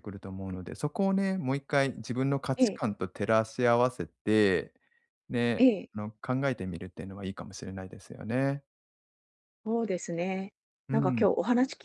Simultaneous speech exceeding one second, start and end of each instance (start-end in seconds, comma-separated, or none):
none